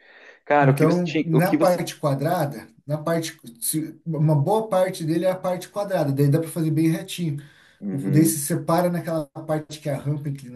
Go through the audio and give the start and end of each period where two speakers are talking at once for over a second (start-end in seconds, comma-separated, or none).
0.6-1.8